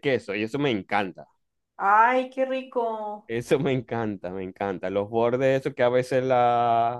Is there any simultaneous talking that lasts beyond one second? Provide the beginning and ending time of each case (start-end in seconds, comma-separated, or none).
none